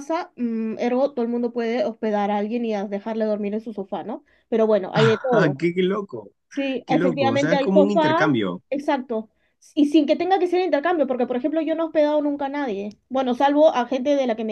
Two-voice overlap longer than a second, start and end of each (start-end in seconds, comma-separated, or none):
6.8-8.3